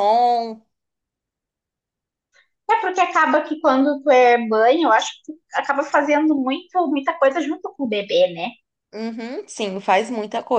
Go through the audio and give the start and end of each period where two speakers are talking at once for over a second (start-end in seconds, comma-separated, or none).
none